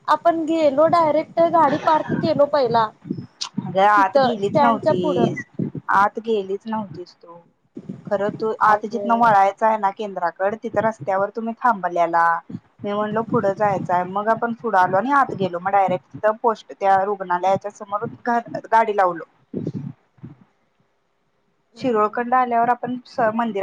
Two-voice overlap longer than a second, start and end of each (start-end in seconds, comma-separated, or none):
4.0-5.3